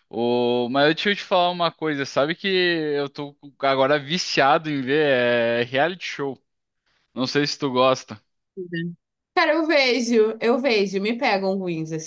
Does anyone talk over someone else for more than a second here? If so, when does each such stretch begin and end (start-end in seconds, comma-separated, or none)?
none